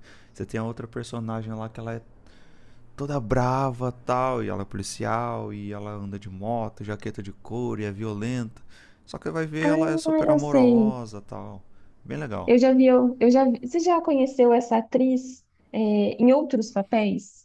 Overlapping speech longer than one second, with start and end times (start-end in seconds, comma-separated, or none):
9.6-11.0